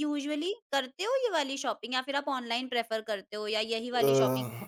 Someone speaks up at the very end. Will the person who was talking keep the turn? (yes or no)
no